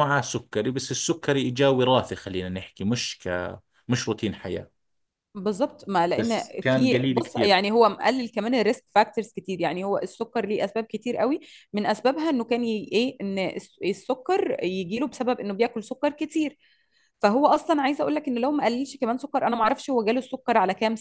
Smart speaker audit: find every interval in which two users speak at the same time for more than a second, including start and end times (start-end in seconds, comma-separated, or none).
6.2-7.6